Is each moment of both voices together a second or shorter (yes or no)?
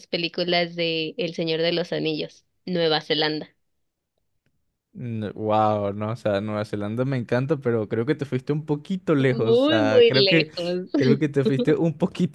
no